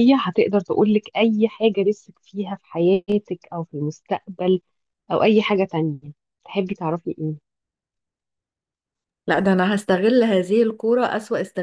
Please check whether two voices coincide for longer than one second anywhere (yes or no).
no